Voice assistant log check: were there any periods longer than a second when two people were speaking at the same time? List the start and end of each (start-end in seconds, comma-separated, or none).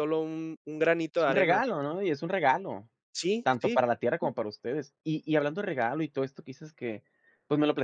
none